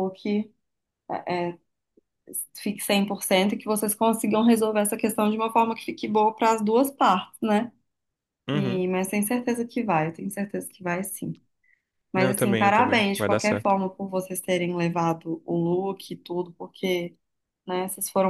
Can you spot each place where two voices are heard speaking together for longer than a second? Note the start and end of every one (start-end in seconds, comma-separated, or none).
12.2-13.8